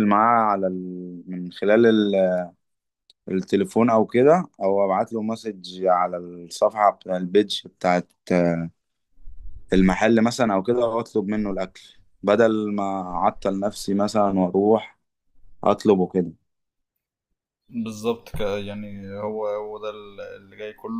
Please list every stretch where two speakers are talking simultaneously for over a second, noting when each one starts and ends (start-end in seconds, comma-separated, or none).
none